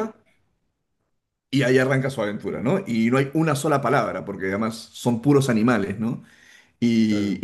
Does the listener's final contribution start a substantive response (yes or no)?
no